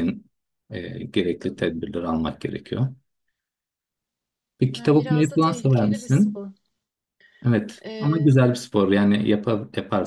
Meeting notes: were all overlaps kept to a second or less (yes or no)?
no